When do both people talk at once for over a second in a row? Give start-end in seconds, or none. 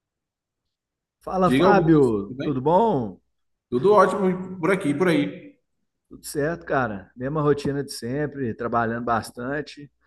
1.4-2.7